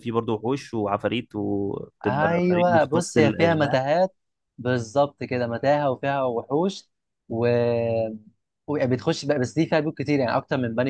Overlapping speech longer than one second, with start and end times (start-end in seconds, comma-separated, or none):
2.0-3.8